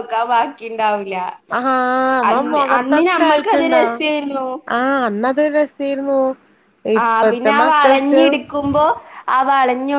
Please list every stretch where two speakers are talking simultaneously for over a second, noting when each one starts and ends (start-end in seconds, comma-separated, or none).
2.3-4.0